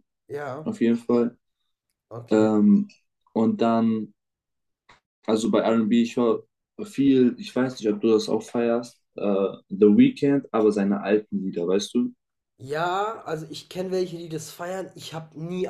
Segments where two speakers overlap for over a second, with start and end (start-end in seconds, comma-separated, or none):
none